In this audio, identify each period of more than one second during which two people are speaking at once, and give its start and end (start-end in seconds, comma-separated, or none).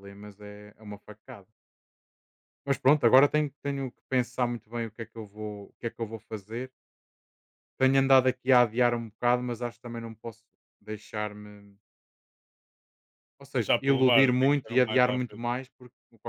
13.5-15.4